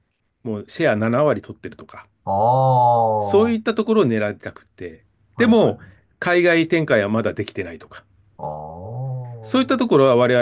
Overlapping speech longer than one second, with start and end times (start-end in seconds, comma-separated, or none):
none